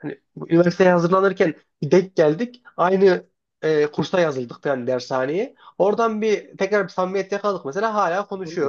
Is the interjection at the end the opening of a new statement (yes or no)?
yes